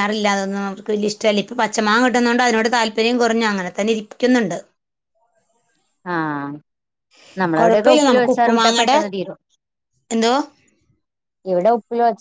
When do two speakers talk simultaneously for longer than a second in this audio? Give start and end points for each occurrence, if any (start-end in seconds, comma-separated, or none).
7.6-9.0